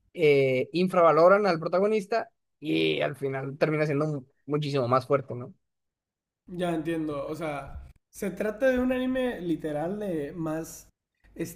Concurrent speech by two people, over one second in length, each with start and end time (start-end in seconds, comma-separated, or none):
none